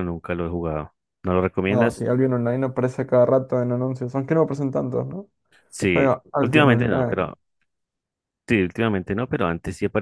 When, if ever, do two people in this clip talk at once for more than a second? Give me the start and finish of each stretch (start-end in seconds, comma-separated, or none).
5.9-7.3